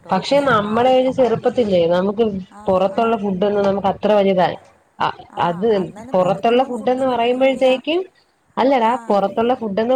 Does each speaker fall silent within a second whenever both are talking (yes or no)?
no